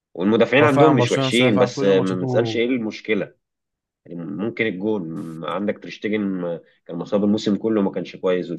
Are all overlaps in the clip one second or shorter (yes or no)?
no